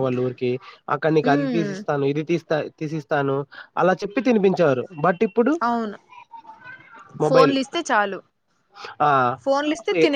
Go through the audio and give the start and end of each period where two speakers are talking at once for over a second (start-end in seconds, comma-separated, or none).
none